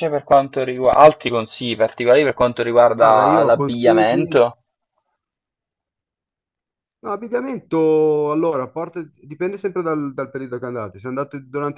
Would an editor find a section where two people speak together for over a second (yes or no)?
yes